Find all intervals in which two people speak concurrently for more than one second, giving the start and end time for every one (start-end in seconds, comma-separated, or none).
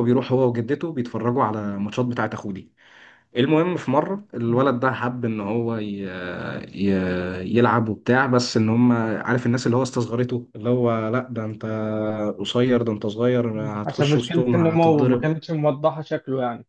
13.5-15.2